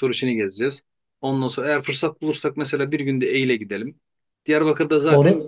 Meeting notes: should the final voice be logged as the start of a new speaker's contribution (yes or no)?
no